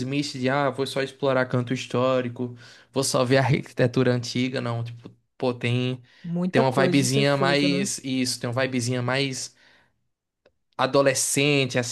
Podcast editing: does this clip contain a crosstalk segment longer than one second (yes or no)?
yes